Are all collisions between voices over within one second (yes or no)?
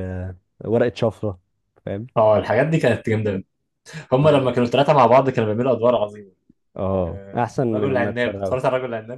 no